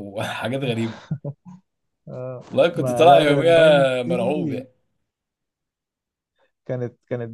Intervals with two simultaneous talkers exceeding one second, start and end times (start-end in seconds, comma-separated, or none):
2.5-4.7